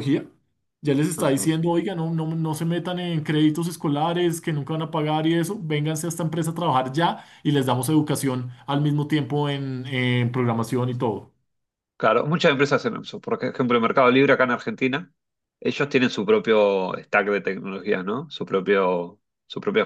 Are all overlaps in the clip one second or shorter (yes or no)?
yes